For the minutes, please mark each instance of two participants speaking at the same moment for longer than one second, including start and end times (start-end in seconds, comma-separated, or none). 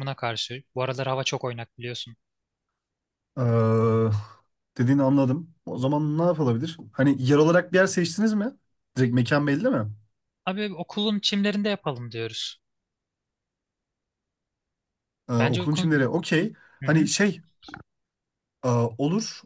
none